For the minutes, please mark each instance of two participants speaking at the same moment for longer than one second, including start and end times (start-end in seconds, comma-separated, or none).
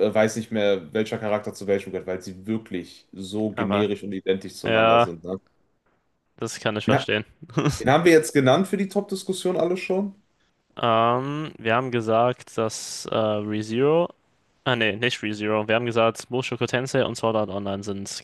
none